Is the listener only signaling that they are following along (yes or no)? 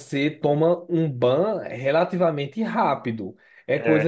yes